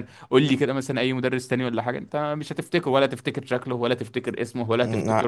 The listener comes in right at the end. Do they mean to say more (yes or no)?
yes